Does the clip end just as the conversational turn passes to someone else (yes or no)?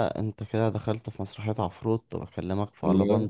no